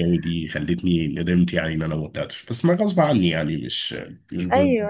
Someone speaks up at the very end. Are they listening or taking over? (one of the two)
taking over